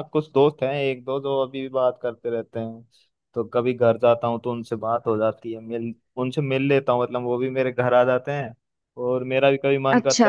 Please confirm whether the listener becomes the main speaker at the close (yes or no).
no